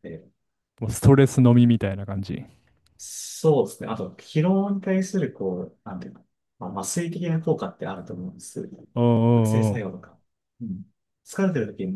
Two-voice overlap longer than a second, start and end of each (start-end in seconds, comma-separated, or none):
none